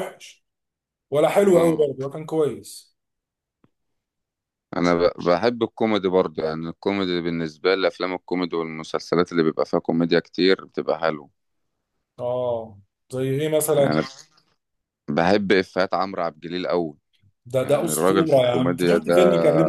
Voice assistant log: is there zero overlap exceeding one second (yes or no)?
no